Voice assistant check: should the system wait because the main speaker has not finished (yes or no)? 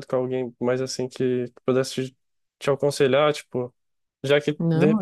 yes